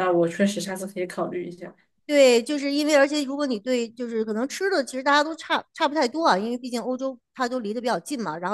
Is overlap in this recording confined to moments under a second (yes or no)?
yes